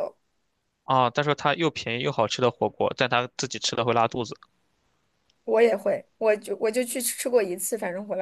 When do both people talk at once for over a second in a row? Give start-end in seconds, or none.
none